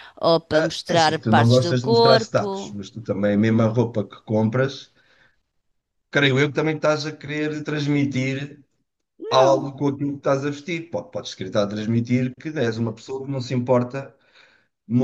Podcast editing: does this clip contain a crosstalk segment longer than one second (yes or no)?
yes